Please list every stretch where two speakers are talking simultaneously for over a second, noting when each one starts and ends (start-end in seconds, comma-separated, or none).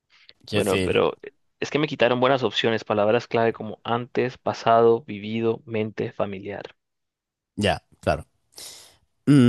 none